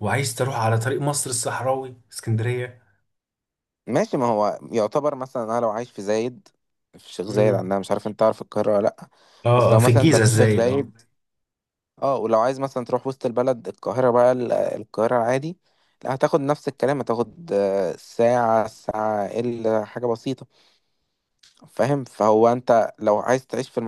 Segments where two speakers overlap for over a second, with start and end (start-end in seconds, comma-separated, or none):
9.6-10.9